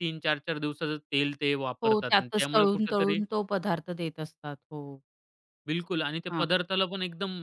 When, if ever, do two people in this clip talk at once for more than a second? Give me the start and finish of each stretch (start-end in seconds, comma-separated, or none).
1.8-3.2